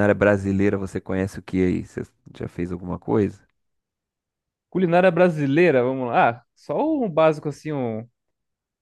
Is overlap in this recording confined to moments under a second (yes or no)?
yes